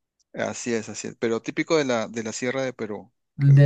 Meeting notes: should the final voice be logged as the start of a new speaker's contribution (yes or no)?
yes